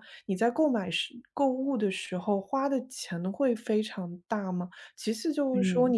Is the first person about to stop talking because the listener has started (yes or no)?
no